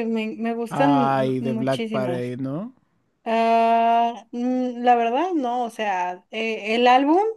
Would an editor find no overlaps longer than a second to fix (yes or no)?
no